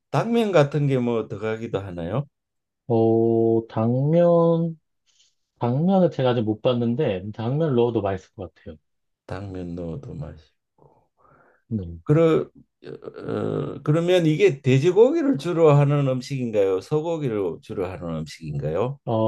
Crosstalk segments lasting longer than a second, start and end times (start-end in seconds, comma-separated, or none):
none